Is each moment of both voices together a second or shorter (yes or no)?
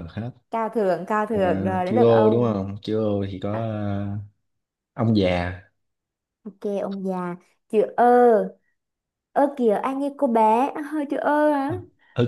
no